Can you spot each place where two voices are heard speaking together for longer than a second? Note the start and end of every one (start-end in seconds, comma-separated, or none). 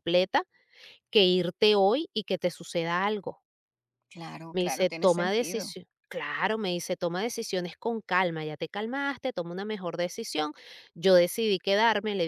4.5-5.8